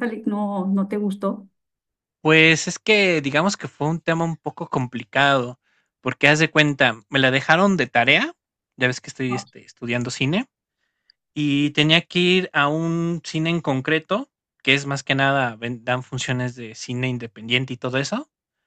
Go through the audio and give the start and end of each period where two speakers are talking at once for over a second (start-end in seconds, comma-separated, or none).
none